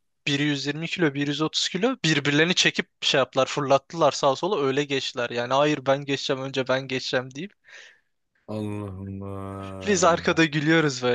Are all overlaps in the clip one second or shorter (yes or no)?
yes